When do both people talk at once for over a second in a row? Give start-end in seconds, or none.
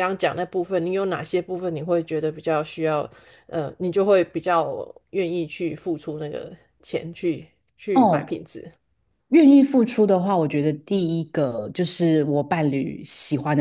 none